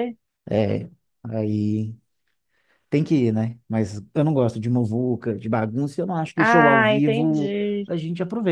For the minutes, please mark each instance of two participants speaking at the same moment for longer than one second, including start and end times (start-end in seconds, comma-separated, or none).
6.3-7.9